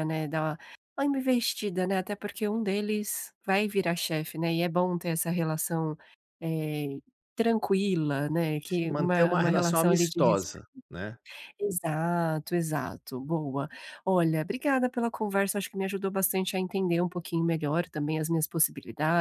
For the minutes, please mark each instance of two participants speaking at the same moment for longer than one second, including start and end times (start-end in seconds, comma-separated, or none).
8.7-10.4